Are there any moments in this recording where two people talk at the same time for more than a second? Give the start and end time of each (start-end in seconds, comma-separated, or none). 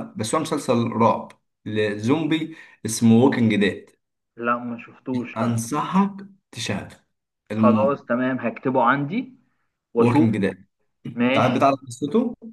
none